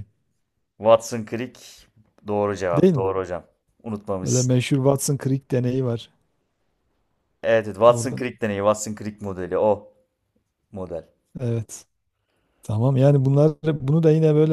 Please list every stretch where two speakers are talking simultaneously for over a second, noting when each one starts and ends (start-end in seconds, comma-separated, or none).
none